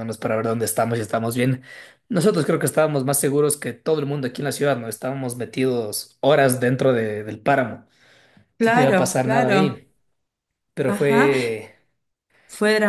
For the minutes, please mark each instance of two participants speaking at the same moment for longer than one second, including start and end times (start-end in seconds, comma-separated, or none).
8.6-9.8